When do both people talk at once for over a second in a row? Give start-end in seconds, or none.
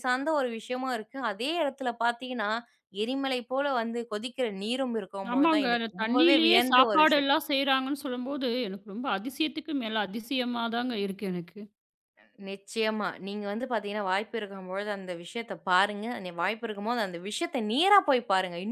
5.3-7.3